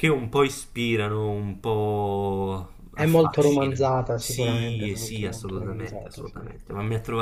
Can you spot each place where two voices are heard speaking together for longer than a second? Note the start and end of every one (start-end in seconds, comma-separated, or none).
2.9-6.4